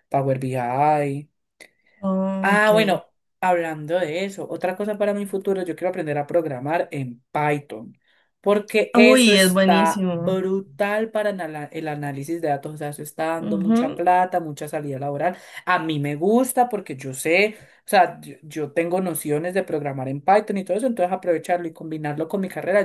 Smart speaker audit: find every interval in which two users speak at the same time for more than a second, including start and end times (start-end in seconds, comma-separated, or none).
8.9-10.4